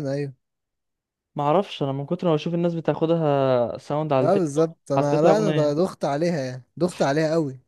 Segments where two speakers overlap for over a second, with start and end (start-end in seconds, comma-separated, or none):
4.2-5.8